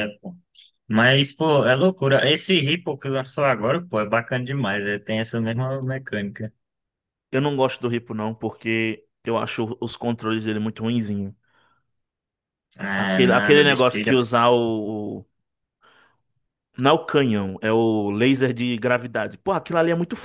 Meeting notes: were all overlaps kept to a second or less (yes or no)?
no